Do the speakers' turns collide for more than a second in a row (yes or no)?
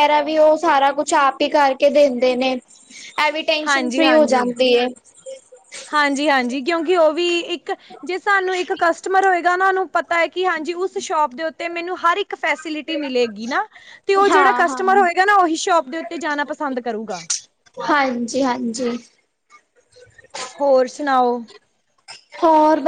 no